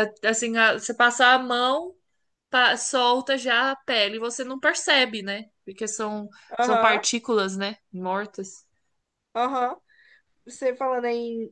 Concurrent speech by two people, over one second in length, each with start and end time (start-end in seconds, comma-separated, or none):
none